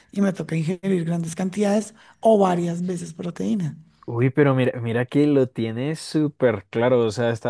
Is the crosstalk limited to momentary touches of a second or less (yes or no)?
yes